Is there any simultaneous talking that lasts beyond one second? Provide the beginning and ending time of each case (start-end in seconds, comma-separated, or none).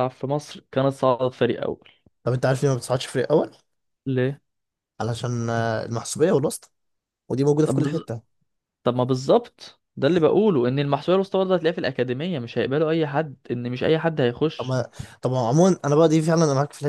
none